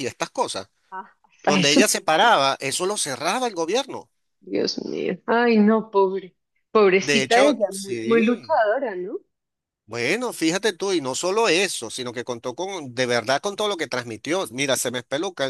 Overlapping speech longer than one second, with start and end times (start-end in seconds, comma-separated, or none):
7.0-8.6